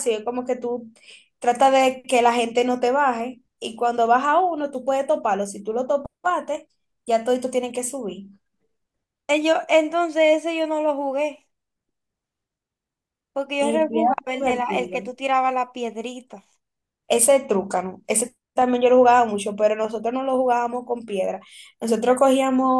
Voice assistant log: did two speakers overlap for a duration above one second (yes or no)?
yes